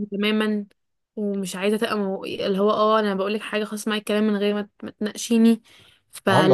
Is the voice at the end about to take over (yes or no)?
no